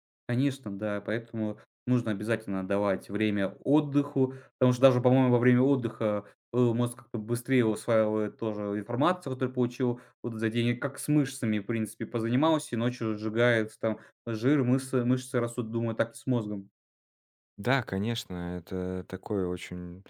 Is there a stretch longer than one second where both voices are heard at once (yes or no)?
no